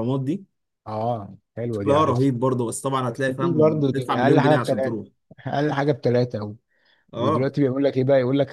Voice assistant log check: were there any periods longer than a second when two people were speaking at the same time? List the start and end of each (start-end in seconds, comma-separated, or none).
3.1-5.0